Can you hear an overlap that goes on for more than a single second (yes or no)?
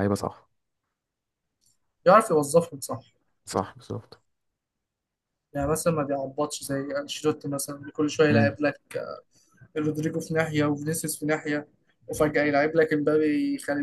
no